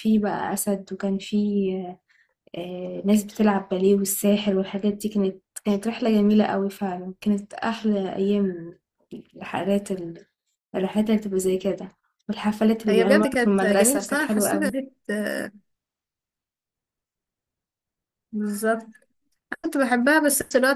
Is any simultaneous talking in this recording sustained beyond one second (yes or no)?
yes